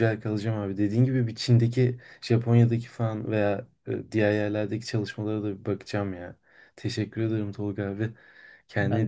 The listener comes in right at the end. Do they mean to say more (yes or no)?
yes